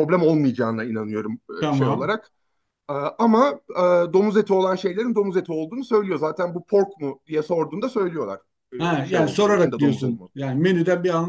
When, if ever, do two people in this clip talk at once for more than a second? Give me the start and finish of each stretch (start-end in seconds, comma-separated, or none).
9.0-10.4